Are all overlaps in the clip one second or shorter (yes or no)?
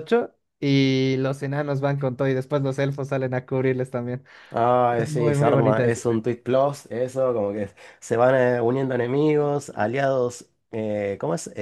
no